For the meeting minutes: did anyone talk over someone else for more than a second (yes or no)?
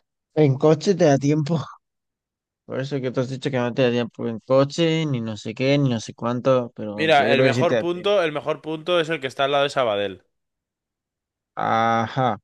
yes